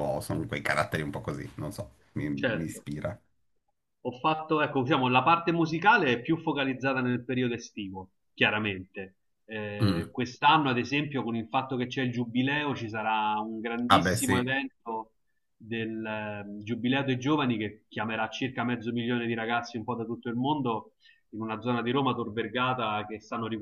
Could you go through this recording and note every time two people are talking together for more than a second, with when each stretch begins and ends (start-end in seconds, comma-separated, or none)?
none